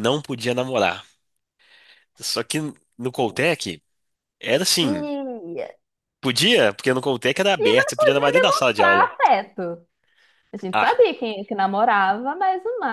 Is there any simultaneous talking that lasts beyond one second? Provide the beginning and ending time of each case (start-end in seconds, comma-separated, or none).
7.6-9.1